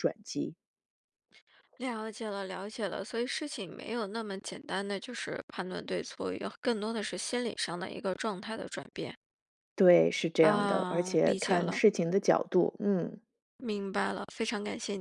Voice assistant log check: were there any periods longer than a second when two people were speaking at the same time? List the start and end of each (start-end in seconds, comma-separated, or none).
10.4-11.8